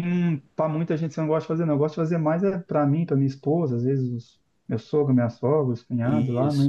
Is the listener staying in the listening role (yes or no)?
yes